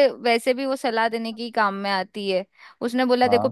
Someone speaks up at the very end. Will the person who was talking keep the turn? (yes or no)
yes